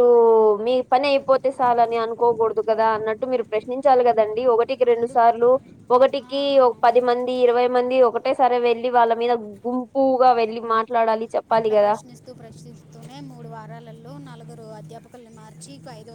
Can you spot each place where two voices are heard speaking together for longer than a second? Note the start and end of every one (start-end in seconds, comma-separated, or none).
none